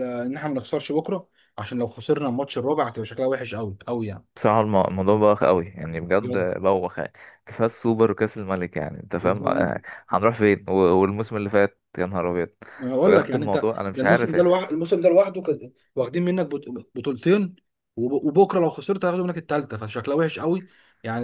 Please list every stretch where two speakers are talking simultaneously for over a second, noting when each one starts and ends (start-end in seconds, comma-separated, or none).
13.0-14.3